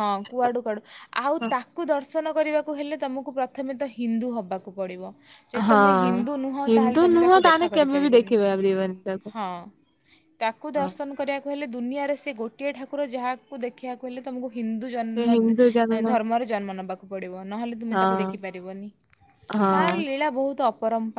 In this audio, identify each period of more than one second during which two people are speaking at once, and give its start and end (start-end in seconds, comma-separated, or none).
6.7-8.3